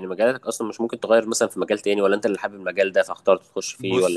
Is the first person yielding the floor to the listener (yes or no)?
yes